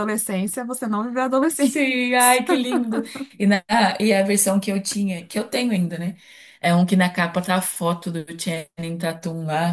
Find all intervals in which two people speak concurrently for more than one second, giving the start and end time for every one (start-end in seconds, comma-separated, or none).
none